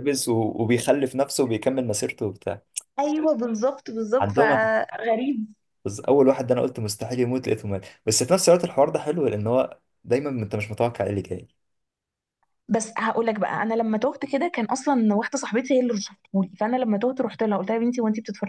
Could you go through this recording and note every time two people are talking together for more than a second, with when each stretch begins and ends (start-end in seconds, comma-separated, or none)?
none